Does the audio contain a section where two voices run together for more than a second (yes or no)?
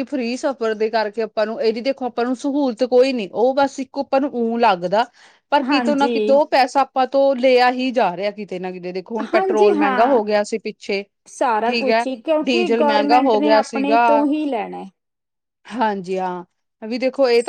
yes